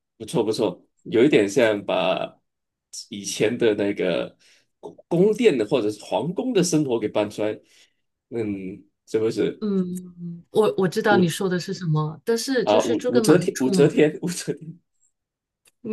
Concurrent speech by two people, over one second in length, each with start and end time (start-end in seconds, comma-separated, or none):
12.6-13.9